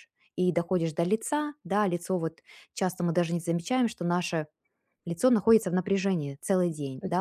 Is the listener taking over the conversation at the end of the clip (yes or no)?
no